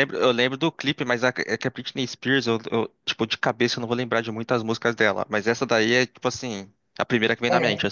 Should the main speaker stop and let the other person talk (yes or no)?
yes